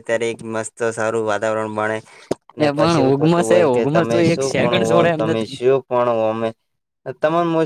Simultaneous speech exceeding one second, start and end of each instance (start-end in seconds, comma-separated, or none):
2.6-5.6